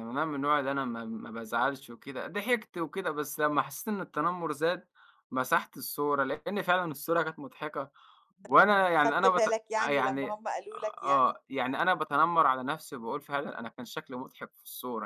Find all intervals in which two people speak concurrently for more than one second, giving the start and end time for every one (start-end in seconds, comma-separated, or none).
8.9-10.4